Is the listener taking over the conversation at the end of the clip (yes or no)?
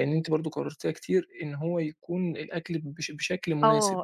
yes